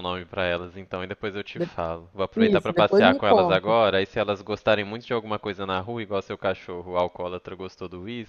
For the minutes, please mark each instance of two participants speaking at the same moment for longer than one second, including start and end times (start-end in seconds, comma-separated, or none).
2.4-3.7